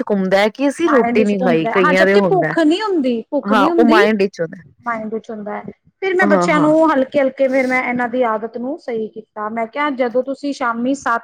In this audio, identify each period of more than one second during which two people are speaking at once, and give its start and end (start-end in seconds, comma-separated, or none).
0.8-2.5